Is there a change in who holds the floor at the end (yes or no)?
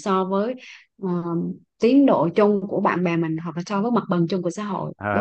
yes